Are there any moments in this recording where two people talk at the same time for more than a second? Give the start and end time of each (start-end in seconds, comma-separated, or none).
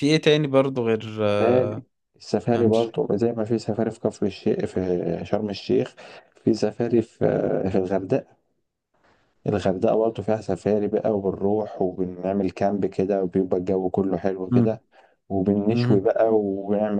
none